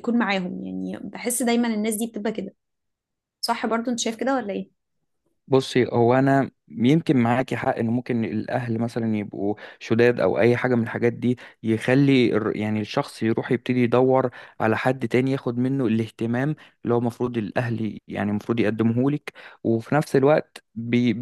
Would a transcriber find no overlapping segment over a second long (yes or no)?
yes